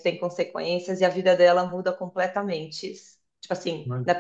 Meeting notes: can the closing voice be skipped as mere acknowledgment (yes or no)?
yes